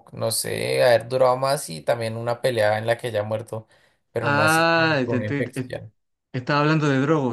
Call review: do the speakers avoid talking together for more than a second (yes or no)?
no